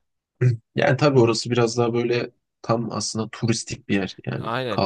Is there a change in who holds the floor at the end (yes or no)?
yes